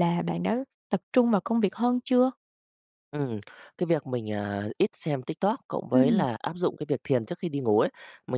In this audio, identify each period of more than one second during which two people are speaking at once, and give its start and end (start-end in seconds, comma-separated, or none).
none